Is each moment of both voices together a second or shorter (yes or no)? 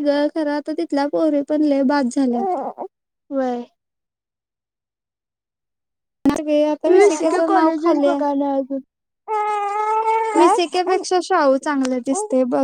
no